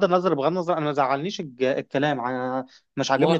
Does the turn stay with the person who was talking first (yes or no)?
yes